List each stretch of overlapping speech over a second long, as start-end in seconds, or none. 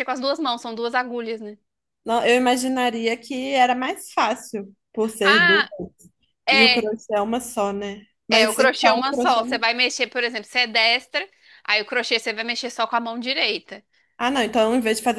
8.3-9.6